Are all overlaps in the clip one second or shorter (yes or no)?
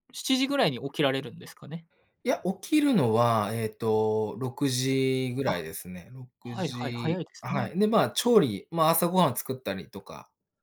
no